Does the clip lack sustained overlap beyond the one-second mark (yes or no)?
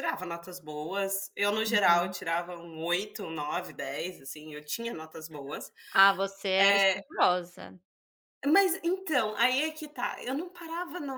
yes